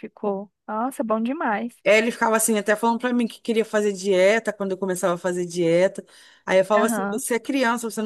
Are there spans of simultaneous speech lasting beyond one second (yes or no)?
no